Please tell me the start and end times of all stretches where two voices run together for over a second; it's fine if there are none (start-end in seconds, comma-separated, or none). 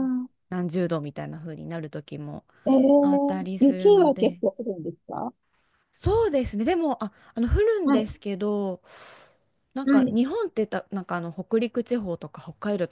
3.0-4.4